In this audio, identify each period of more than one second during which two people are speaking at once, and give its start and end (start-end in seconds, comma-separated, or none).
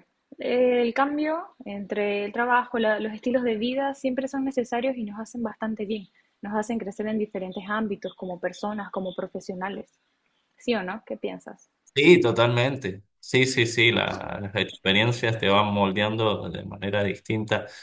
none